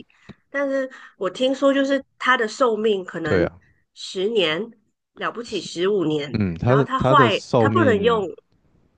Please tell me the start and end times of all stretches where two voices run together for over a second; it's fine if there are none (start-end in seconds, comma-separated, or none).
6.3-8.2